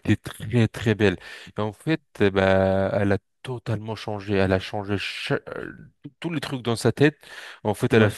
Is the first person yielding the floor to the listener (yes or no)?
no